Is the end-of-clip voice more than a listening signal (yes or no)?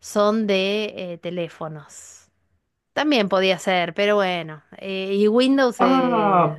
yes